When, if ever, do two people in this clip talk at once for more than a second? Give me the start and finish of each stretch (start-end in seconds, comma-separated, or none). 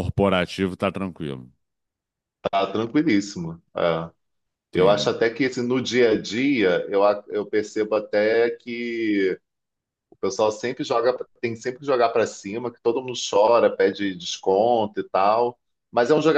none